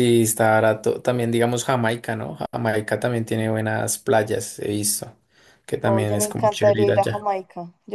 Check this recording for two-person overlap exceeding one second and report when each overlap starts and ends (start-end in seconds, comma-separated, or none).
5.8-7.3